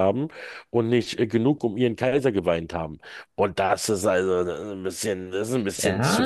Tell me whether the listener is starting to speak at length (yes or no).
yes